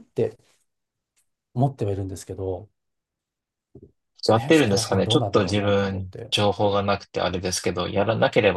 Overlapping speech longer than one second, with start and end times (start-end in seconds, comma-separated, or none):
4.4-6.3